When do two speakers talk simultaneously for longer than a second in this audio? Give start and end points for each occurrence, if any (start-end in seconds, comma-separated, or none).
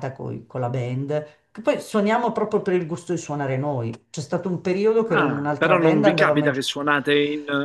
5.0-6.6